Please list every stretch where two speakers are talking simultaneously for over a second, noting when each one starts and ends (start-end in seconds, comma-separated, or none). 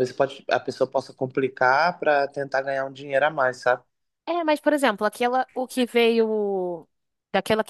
none